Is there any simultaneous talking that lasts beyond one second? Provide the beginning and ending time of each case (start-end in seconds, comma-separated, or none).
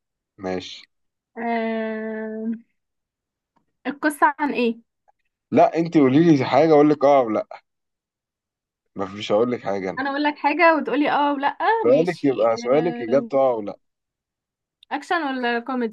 11.8-13.3